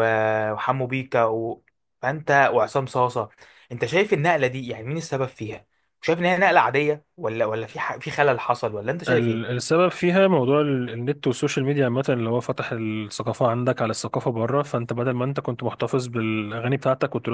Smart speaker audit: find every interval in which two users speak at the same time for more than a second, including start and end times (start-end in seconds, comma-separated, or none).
none